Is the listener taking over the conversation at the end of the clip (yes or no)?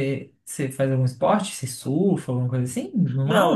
yes